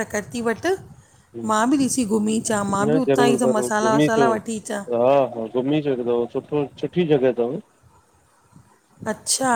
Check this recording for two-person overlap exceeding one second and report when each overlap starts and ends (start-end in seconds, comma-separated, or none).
2.8-4.3